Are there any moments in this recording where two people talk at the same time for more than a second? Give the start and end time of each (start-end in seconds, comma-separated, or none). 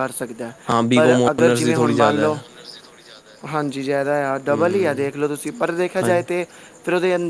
0.9-2.4